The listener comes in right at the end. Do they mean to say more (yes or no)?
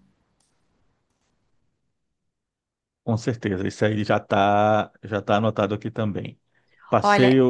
no